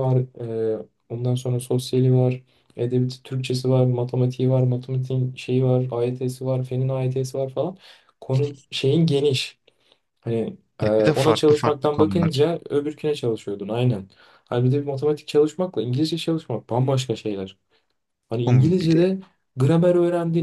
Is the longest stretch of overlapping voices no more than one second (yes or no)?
no